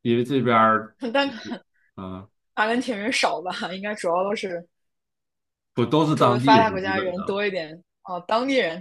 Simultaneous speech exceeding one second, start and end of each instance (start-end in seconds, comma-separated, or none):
6.1-7.4